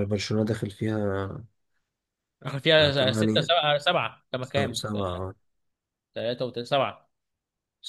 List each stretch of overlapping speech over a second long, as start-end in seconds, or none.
none